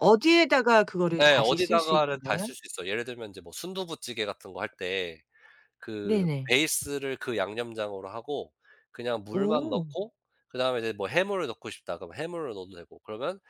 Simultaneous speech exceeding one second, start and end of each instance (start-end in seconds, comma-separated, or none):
1.2-2.5